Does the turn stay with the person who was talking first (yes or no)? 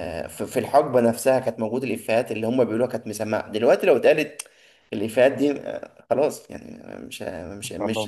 yes